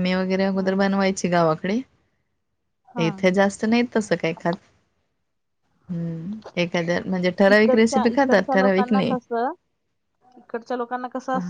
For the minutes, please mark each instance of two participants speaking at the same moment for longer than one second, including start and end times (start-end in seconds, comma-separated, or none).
7.5-9.1